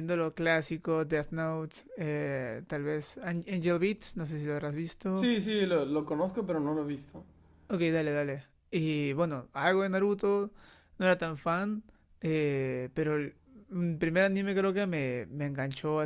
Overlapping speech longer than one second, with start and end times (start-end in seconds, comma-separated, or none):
none